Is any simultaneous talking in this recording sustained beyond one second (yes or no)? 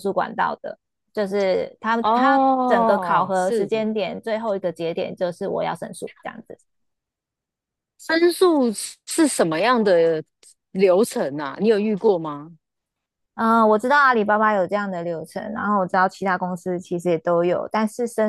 yes